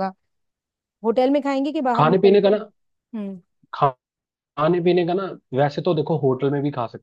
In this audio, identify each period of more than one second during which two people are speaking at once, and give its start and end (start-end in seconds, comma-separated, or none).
none